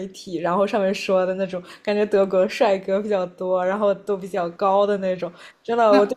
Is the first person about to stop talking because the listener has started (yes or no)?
no